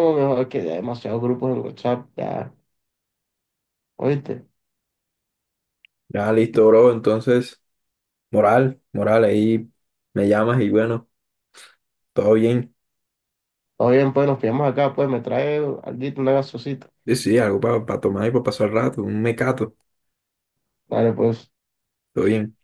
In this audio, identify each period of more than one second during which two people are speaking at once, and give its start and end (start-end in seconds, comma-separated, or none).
none